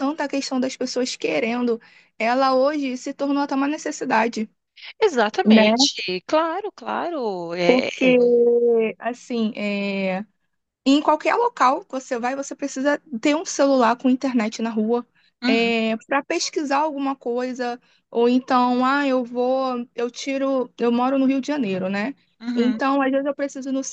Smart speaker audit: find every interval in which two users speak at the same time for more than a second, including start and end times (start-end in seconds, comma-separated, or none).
none